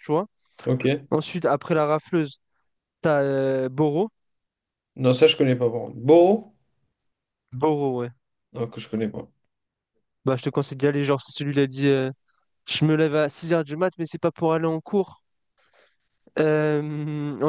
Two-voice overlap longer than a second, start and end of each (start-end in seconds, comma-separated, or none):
none